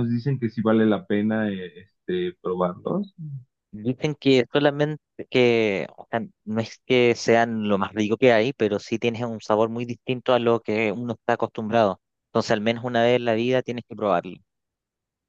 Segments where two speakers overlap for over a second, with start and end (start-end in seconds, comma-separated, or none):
none